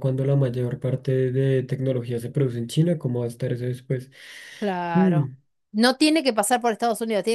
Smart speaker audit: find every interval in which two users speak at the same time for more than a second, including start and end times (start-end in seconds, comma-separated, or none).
none